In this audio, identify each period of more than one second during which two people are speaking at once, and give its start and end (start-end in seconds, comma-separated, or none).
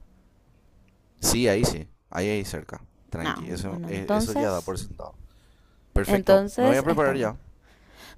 3.2-4.7, 6.0-7.3